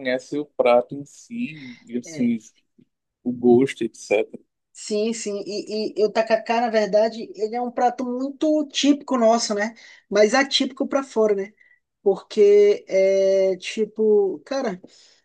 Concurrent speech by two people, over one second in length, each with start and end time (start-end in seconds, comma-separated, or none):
none